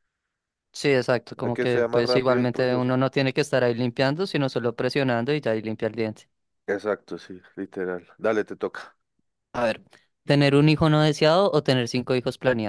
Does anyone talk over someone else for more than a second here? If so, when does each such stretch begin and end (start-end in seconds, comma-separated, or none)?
1.4-2.9